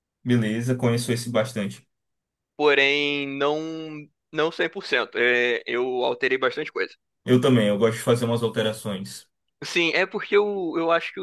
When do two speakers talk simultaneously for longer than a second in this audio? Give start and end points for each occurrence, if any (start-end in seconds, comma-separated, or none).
none